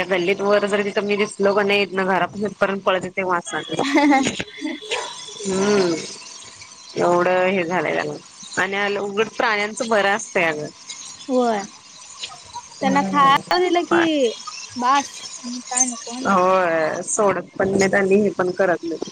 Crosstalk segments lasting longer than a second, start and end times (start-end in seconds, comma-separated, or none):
12.8-14.0